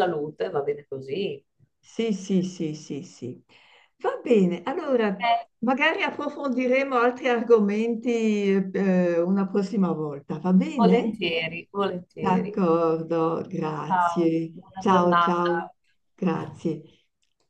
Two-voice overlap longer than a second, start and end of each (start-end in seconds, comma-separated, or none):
13.9-15.6